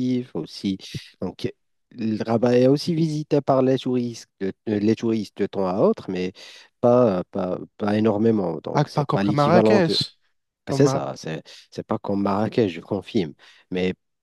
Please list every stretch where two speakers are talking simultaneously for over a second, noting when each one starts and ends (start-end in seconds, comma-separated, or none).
8.7-10.0